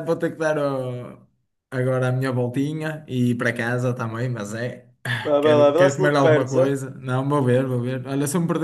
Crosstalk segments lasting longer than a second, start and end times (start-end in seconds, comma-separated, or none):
5.2-6.8